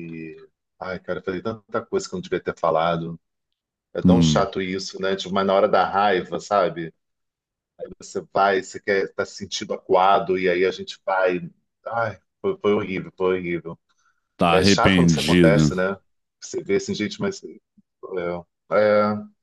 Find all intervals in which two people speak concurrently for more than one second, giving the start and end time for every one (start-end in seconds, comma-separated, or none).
14.5-15.7